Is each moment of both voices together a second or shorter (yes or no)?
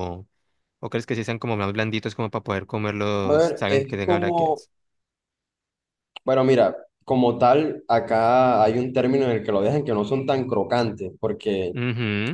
no